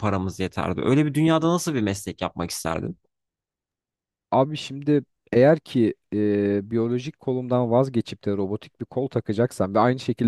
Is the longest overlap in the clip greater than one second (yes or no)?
no